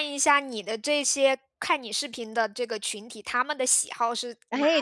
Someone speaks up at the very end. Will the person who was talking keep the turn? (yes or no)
no